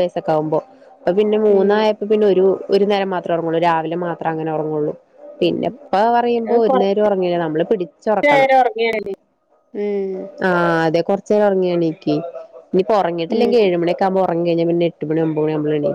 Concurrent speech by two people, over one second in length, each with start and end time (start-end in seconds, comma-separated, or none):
none